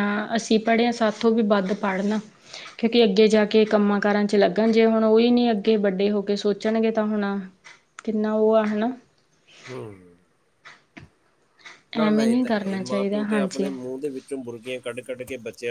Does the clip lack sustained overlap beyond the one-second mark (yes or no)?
no